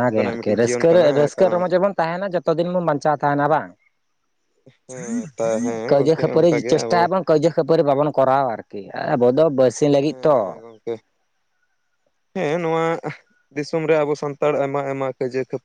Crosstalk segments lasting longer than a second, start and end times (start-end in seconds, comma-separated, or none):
4.9-7.0